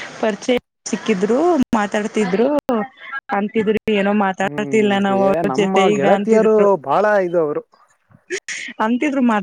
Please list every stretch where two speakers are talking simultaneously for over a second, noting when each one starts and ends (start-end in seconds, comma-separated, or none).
4.5-6.7